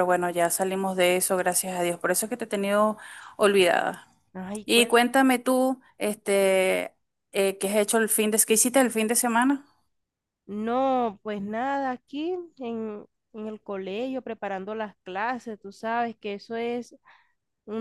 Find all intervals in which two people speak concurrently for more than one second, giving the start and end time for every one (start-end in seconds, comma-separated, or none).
none